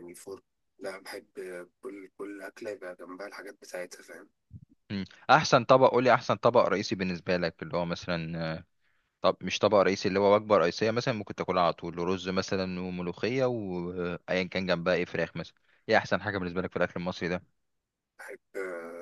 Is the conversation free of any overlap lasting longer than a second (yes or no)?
yes